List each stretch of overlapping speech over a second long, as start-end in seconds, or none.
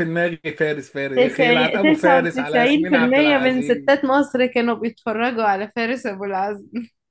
1.2-4.0